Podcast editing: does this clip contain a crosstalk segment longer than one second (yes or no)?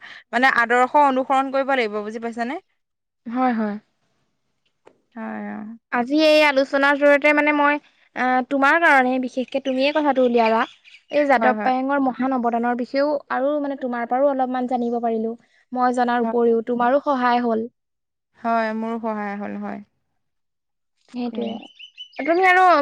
no